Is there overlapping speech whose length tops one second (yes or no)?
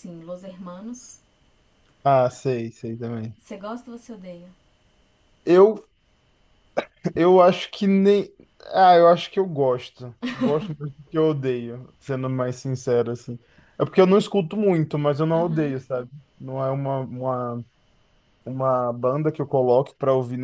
no